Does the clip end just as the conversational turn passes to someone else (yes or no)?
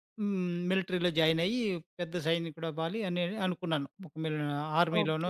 yes